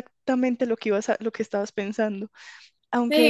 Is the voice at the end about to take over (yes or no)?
yes